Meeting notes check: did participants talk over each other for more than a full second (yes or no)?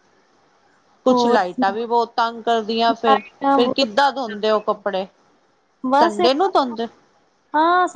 yes